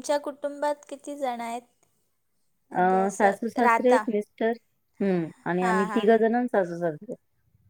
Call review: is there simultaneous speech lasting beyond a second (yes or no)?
no